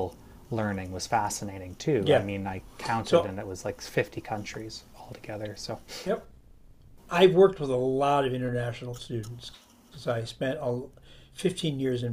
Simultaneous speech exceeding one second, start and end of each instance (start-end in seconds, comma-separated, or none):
none